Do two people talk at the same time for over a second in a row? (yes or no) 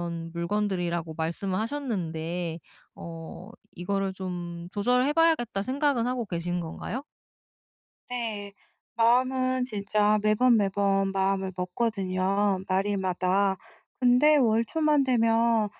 no